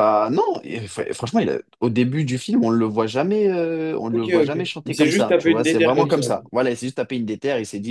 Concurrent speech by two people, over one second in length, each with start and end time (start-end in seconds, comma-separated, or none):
4.1-6.2